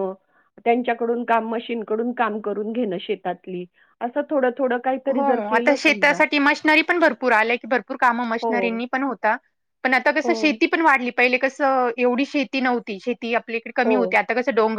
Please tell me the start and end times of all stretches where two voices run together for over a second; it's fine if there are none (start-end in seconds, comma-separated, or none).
none